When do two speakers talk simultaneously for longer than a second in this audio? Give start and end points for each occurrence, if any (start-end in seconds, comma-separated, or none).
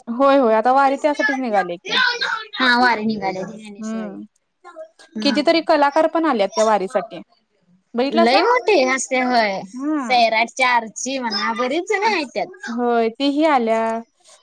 none